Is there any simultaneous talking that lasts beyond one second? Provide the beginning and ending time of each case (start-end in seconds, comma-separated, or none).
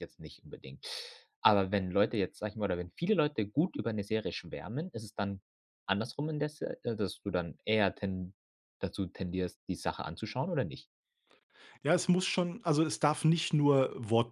none